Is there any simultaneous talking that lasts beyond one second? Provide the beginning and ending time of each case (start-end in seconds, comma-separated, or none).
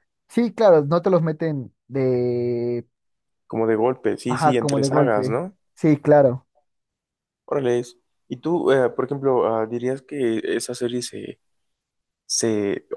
4.3-5.5